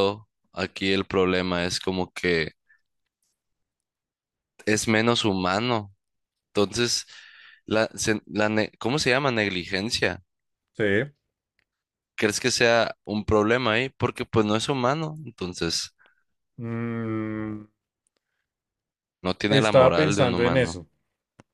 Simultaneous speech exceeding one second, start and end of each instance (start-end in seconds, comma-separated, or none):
19.5-20.8